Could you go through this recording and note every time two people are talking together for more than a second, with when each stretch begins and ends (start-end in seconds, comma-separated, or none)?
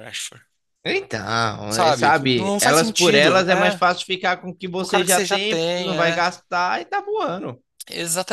1.7-3.8, 4.8-6.2